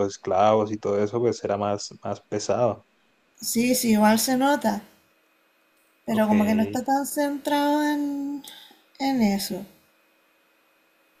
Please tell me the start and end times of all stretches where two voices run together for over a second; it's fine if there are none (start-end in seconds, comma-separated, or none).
none